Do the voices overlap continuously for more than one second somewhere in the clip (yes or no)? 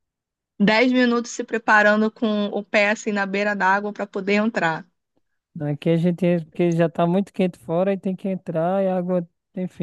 no